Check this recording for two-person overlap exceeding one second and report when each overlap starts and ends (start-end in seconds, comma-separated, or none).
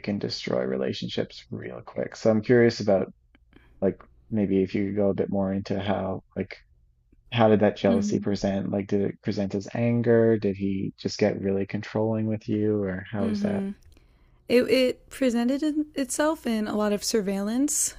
none